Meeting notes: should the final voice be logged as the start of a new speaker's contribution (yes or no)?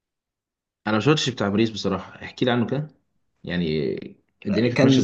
yes